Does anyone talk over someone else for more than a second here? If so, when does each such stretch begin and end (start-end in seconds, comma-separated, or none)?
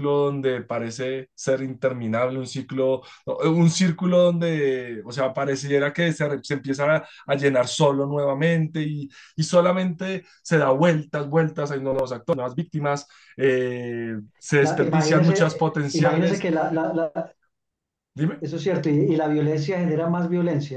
14.6-16.5